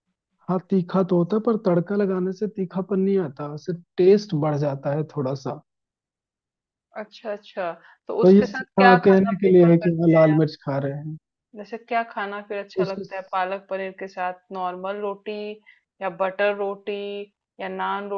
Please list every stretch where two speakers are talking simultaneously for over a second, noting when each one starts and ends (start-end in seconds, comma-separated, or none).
8.2-10.4